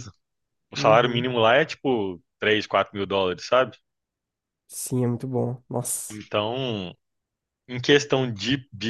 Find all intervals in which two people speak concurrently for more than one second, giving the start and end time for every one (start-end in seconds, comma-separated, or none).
none